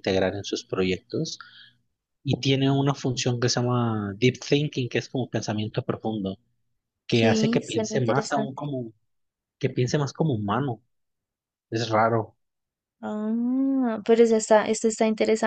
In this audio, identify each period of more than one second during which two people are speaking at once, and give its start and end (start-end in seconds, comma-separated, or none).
7.1-8.5